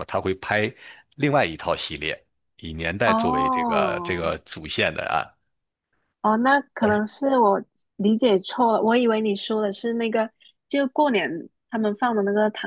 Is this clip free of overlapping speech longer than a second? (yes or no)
no